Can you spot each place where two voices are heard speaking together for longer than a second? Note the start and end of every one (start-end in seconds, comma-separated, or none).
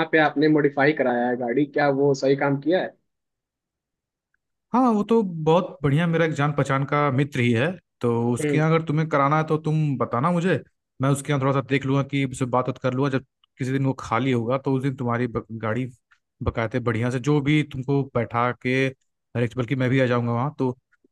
none